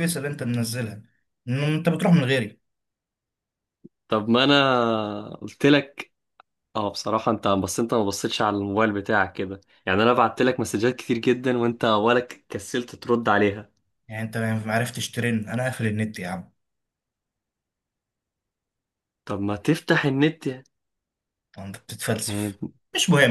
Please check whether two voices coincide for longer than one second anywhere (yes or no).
no